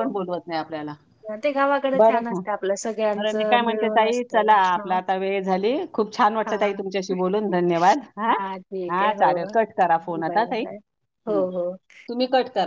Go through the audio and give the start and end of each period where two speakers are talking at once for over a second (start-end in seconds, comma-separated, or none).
3.2-5.0